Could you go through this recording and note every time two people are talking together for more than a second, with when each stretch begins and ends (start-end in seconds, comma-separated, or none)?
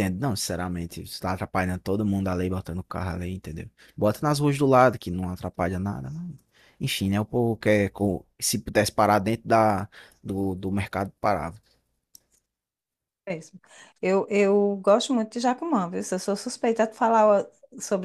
none